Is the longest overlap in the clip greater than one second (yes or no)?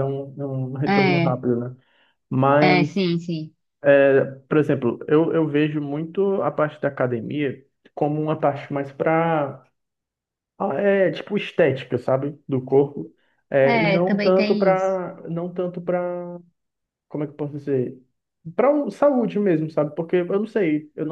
yes